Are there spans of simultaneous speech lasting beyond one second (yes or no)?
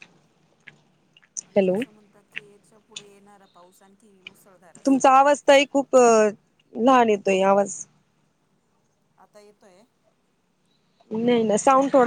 no